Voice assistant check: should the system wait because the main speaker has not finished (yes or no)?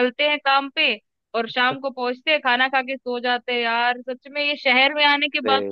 yes